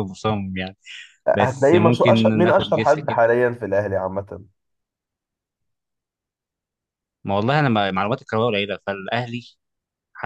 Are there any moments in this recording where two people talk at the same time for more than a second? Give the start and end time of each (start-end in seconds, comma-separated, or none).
1.3-3.2